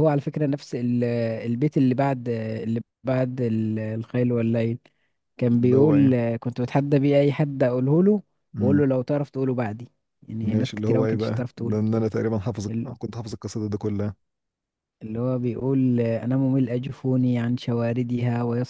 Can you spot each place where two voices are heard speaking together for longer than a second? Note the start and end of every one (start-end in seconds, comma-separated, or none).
10.4-11.8